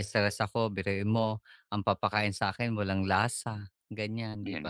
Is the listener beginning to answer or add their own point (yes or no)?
no